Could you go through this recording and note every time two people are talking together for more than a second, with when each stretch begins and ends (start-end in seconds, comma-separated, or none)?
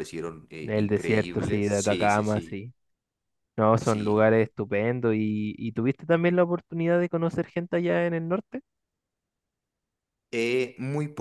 0.6-2.6